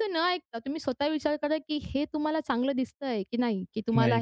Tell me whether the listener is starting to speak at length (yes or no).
no